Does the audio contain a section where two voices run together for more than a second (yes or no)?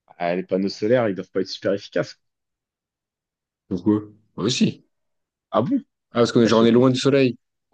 no